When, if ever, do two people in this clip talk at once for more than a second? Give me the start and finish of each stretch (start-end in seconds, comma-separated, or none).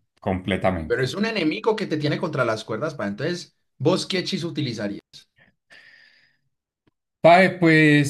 none